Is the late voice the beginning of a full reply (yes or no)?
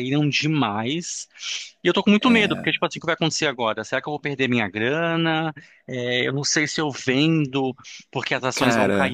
no